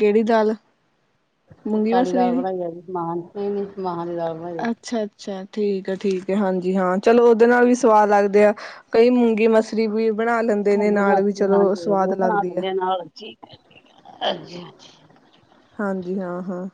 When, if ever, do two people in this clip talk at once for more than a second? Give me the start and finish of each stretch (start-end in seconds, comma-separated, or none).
10.8-12.6